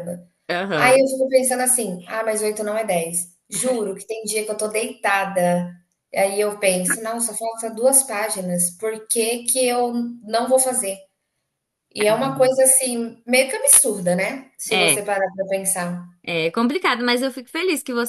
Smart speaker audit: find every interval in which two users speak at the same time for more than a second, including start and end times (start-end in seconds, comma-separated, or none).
none